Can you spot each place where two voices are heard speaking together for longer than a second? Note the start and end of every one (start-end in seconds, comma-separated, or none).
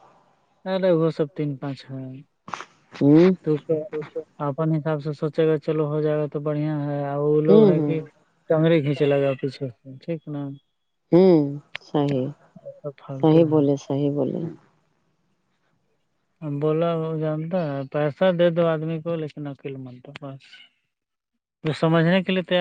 none